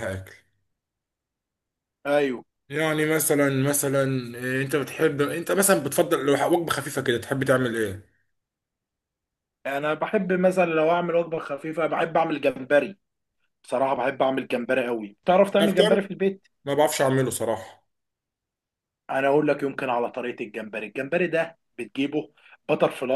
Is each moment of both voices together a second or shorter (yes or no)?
yes